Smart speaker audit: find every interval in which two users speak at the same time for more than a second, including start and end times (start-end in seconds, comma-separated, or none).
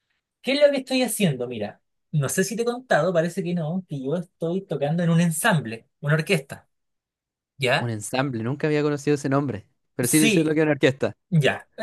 none